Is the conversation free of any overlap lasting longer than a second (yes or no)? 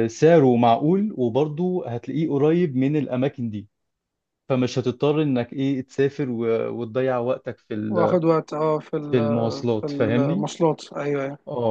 no